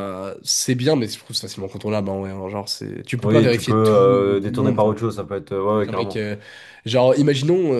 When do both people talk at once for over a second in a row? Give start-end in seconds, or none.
3.2-5.0